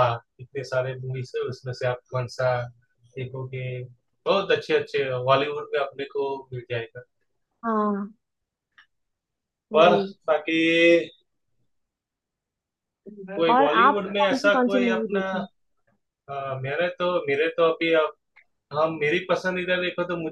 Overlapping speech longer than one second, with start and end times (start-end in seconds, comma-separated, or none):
13.5-15.2